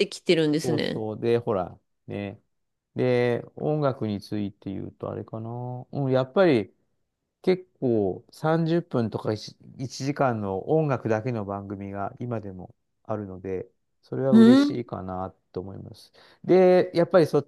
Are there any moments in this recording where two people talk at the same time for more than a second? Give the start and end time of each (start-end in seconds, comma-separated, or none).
none